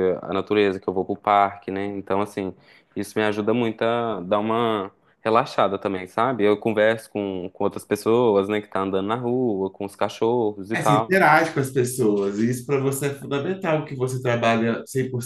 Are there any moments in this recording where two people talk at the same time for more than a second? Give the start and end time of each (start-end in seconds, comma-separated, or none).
none